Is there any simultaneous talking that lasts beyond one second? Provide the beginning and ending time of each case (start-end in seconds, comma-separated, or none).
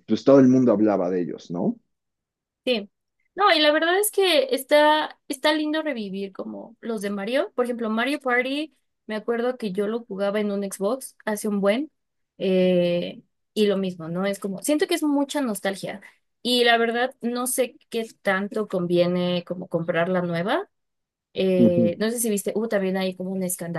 none